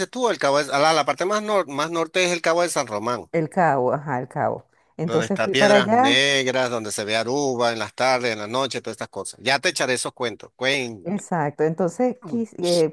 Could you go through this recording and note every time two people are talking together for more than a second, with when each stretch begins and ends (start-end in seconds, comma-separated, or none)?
5.0-6.2